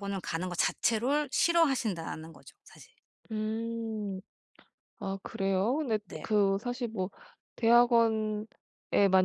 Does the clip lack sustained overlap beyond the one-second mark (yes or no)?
yes